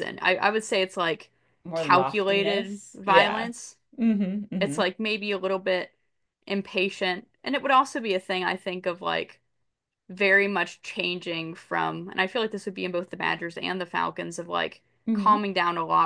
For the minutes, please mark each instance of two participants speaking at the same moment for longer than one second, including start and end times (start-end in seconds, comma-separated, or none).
1.7-3.5